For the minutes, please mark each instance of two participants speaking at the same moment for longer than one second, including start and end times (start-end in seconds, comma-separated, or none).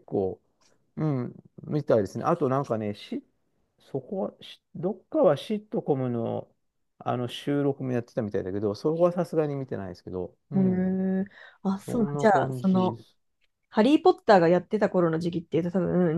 11.7-13.0